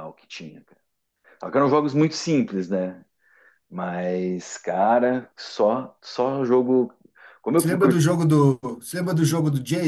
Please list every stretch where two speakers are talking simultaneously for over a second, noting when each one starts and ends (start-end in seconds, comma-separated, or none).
none